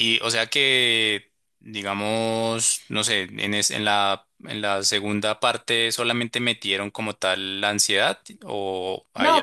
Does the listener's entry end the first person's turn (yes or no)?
yes